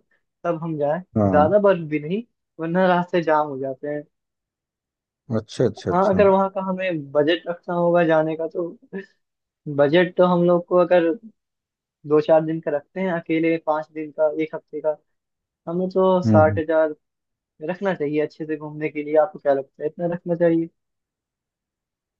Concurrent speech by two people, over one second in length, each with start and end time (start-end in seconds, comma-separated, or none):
none